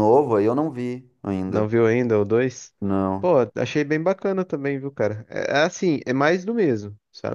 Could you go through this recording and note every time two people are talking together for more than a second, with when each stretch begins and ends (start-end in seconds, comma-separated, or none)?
none